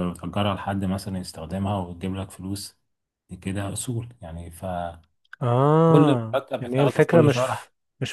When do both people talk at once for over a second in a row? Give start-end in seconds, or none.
6.3-7.6